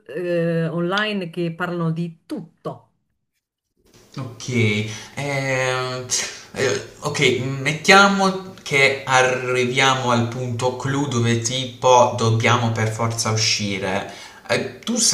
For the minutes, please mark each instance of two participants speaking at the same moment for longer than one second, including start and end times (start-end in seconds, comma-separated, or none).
none